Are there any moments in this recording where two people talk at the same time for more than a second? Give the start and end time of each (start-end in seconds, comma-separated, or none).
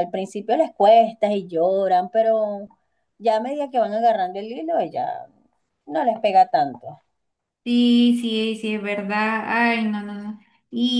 none